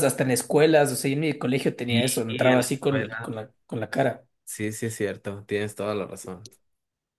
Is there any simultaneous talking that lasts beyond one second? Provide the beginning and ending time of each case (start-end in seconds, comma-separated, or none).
1.9-3.4